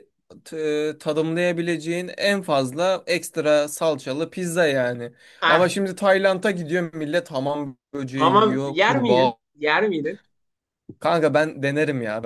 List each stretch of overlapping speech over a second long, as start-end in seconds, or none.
8.1-9.4